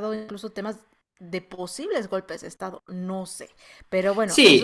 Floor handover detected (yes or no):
yes